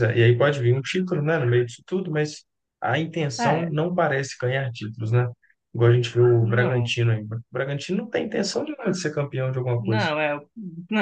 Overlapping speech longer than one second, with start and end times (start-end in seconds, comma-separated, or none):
none